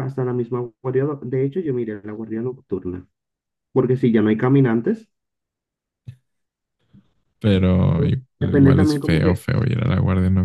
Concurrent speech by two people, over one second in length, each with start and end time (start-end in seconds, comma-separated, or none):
7.9-9.4